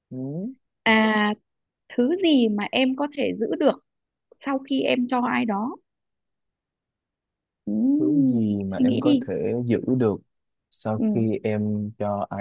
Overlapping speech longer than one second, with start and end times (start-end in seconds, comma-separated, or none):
8.0-9.3